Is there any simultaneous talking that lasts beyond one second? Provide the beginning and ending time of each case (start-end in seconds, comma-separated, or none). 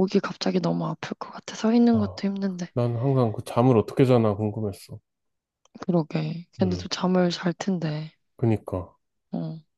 none